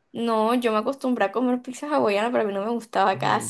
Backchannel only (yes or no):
no